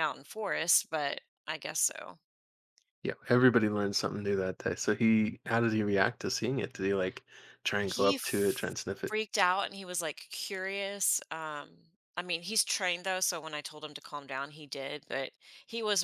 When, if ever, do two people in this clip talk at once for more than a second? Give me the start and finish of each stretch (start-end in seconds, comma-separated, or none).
7.8-9.2